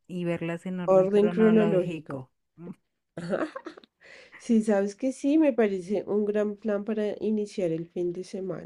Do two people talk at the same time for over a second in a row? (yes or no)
yes